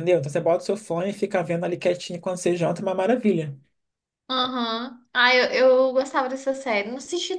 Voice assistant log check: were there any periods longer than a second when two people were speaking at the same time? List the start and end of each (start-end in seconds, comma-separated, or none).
none